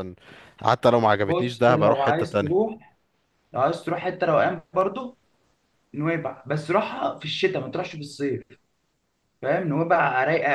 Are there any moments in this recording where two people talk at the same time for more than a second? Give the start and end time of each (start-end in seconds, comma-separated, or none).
1.2-2.7